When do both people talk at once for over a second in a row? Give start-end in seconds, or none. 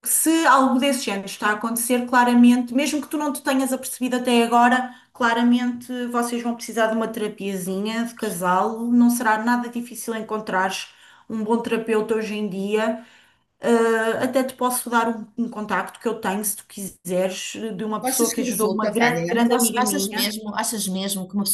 18.0-20.4